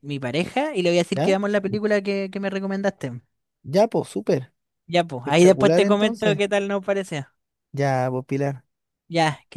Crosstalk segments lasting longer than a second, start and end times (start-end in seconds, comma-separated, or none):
5.2-6.4